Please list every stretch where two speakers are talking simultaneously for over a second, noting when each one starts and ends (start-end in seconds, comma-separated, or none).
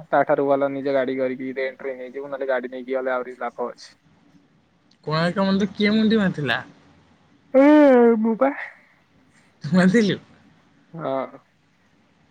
none